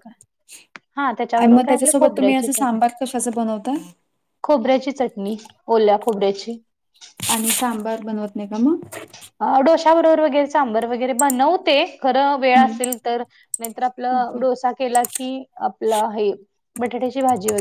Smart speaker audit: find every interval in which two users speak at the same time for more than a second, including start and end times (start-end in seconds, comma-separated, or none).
1.4-2.8